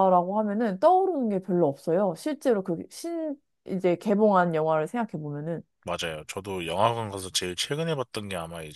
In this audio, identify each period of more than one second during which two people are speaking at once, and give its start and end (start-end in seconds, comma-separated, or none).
none